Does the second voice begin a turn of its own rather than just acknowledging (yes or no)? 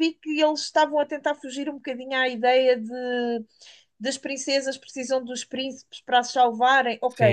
yes